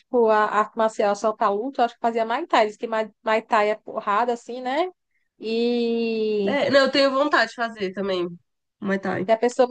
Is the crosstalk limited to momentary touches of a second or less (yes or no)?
yes